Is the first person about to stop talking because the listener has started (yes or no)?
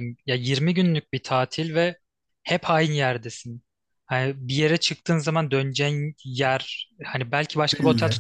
no